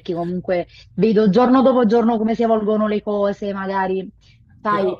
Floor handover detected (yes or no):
no